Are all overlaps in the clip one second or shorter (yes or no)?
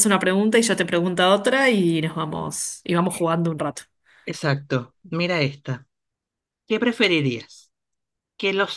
yes